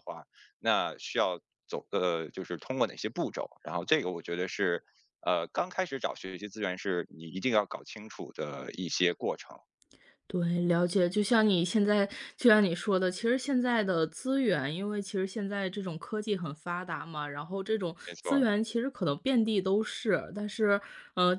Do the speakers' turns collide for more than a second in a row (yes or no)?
no